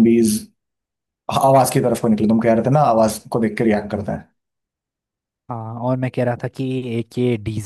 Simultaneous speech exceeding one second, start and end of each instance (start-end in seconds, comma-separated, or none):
none